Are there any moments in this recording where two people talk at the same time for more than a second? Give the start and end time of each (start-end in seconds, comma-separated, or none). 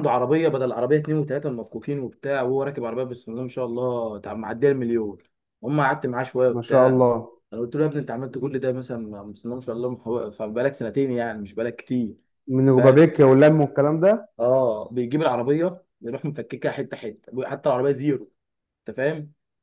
none